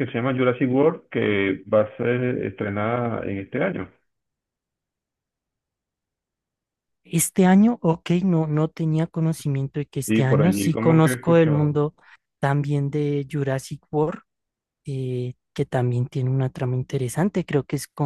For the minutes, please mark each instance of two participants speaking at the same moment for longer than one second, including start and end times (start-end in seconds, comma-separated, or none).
10.1-11.8